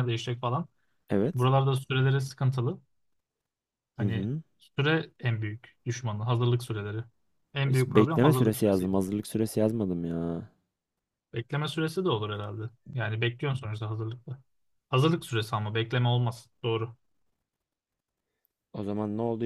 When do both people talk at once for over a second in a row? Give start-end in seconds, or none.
7.7-8.9